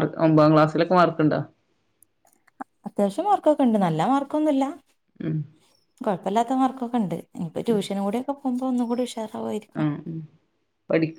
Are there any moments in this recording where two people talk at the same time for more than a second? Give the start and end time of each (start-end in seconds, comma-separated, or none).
none